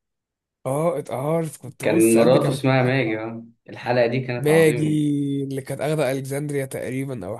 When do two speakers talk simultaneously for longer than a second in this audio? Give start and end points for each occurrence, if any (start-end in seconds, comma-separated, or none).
1.8-3.2